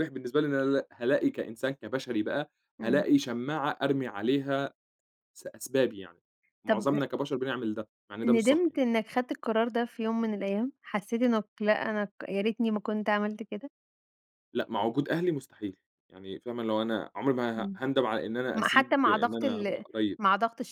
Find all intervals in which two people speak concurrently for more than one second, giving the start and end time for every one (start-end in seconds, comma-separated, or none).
18.5-20.2